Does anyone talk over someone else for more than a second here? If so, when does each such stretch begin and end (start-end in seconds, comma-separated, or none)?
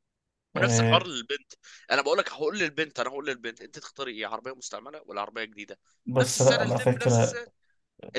6.1-7.4